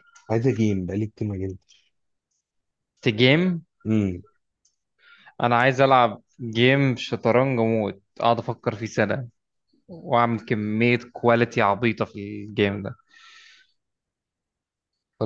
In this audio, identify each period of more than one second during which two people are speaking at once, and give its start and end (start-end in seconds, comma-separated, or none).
none